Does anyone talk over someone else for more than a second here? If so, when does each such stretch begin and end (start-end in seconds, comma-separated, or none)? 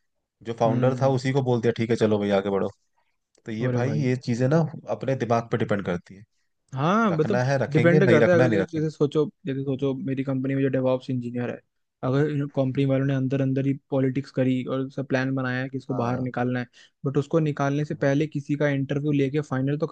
7.1-8.9